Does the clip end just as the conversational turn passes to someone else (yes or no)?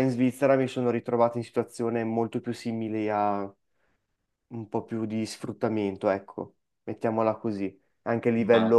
no